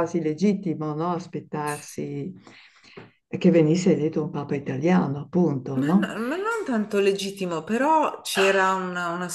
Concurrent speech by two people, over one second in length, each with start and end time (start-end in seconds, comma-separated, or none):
none